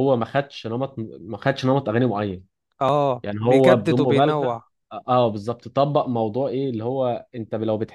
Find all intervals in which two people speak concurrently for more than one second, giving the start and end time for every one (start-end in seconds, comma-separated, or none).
3.2-4.6